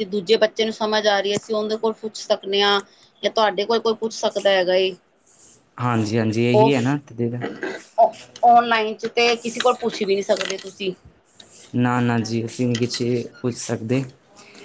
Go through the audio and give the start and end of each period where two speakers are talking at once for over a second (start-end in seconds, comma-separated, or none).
none